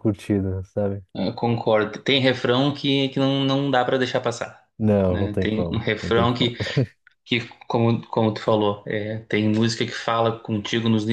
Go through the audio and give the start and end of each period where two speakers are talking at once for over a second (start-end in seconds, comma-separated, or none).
5.1-6.5